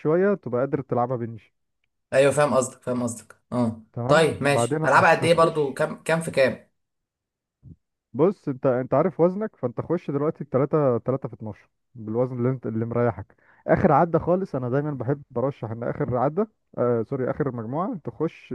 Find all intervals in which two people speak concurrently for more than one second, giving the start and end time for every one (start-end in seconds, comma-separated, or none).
3.9-5.8